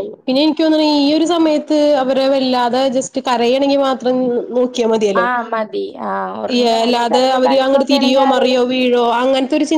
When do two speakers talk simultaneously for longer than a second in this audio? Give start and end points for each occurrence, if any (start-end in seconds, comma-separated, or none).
6.5-8.6